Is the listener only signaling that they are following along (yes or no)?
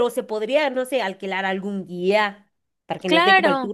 no